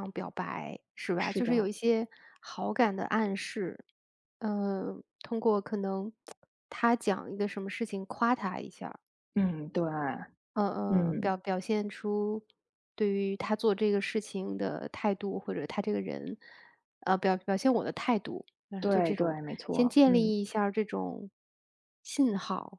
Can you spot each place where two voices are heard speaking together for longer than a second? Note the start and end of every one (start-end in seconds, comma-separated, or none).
18.8-20.3